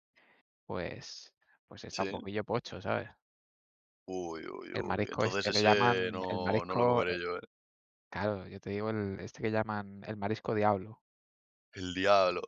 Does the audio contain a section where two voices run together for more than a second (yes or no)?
yes